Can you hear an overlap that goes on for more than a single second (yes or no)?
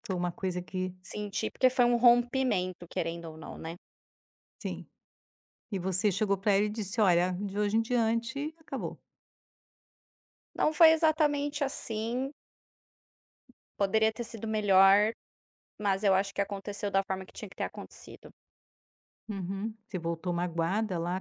no